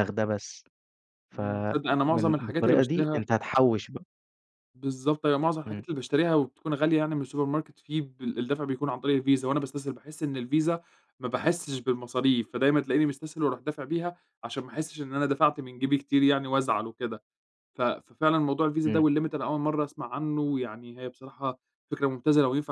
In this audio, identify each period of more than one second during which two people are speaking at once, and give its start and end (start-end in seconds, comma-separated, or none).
1.3-3.2